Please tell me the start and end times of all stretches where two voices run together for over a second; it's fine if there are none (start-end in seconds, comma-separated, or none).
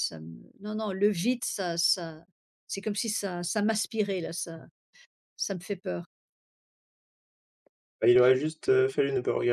none